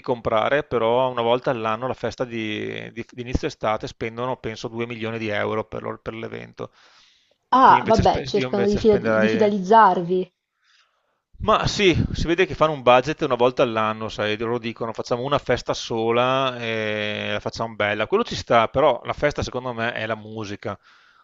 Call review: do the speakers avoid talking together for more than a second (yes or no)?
no